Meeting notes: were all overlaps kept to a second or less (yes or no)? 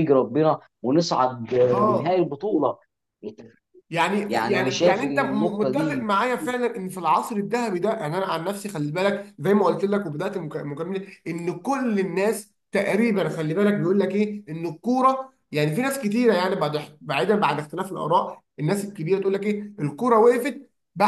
no